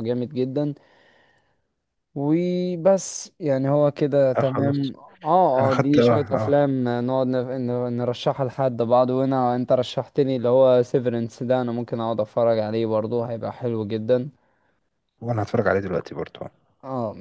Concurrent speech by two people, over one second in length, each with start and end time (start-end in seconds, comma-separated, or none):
5.6-6.8